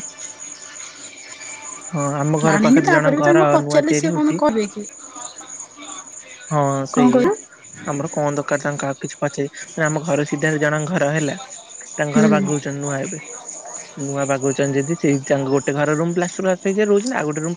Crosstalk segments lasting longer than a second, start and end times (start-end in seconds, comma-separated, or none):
2.5-4.4